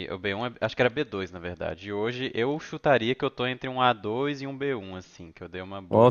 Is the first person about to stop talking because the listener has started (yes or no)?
yes